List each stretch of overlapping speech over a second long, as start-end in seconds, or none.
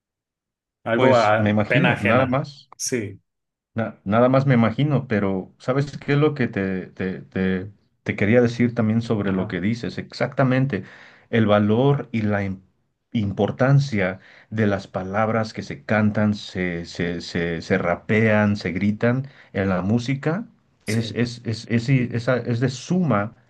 0.9-2.4